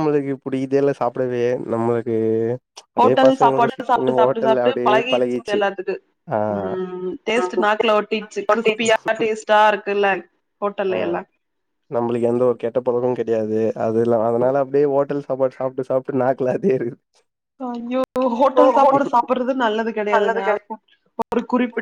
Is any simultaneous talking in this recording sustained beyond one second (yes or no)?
yes